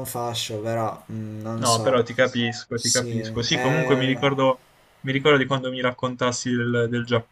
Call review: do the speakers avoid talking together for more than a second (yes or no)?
no